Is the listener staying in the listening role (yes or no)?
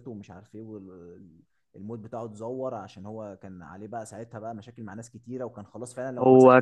no